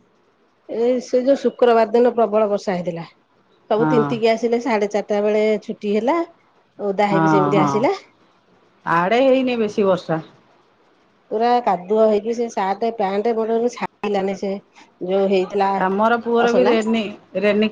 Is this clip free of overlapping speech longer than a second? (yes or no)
yes